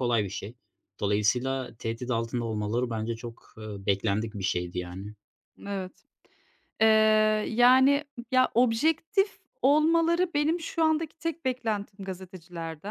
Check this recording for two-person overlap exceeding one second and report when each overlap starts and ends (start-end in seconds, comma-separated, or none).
none